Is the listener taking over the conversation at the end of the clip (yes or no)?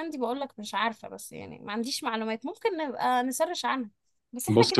no